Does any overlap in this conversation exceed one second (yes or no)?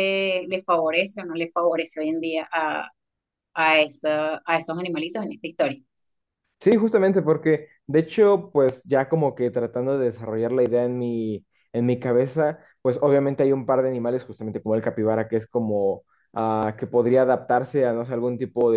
no